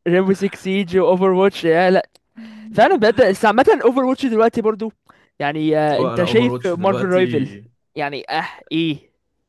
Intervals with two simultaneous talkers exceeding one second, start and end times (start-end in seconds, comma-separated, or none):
5.9-7.2